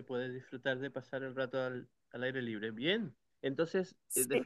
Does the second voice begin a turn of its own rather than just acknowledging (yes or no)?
no